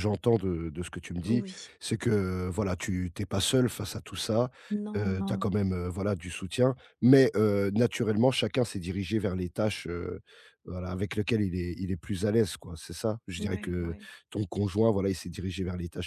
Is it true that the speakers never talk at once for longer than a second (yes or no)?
yes